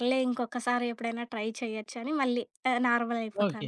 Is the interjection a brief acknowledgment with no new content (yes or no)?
no